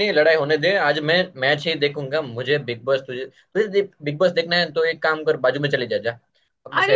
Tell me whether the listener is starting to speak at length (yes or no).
yes